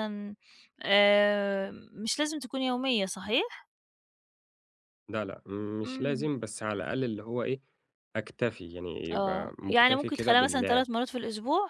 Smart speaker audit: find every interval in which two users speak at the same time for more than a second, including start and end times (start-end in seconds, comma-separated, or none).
9.1-10.9